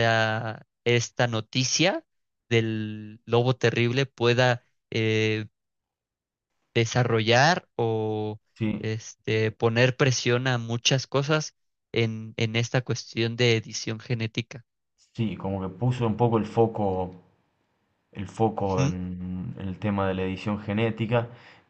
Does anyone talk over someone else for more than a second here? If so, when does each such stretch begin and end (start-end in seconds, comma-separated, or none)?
none